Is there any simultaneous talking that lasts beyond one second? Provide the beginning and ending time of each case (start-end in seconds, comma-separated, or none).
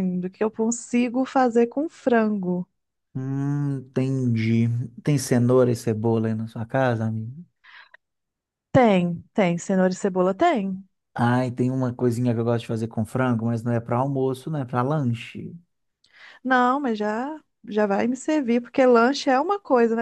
none